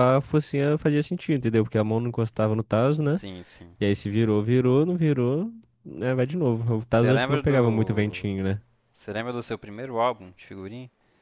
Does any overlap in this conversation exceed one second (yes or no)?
yes